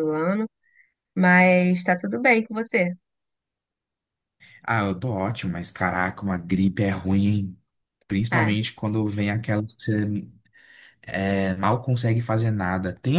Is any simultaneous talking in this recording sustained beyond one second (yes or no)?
no